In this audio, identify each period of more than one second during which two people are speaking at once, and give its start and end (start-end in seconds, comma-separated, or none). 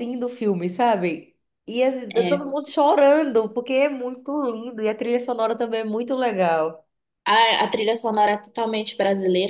none